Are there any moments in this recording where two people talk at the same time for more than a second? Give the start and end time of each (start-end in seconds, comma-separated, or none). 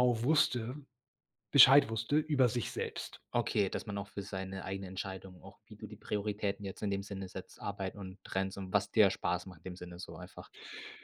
none